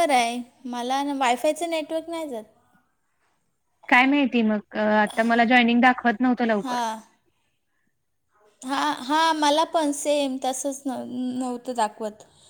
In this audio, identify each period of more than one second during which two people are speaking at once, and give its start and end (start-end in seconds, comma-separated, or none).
none